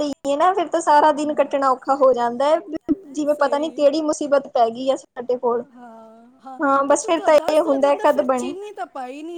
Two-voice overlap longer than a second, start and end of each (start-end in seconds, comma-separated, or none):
6.9-8.5